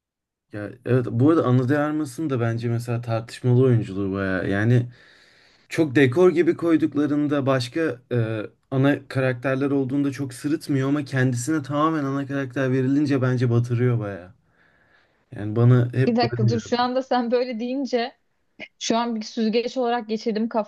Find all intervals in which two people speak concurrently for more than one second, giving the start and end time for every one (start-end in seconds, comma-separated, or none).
none